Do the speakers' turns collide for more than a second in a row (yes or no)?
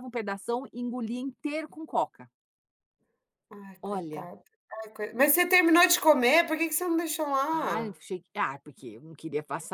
no